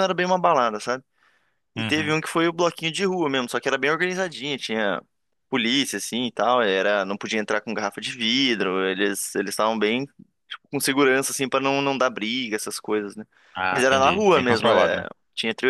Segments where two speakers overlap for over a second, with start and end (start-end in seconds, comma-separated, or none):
13.7-15.1